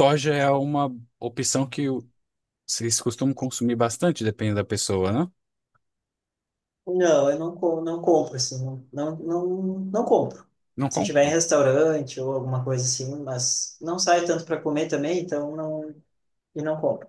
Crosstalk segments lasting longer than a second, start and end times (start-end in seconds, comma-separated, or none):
none